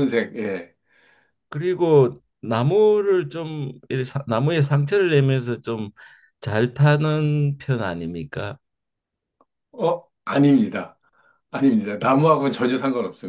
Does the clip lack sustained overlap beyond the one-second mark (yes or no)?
yes